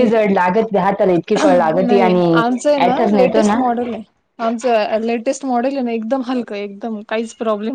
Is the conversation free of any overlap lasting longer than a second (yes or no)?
no